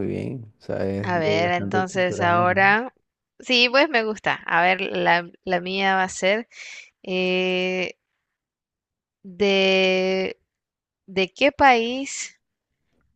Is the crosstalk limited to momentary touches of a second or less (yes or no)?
no